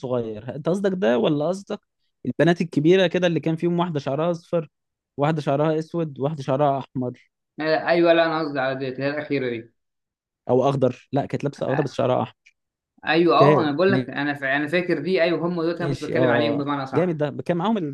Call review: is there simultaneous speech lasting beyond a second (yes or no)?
yes